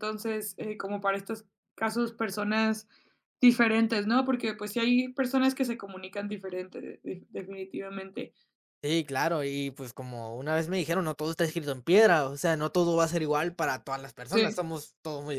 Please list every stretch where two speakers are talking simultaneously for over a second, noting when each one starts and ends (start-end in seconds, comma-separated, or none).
none